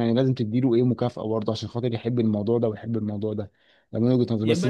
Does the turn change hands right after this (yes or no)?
yes